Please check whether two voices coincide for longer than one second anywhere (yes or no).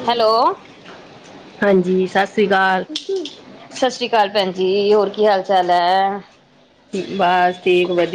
no